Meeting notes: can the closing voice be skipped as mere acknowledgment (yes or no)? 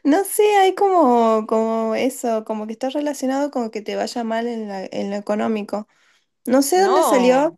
yes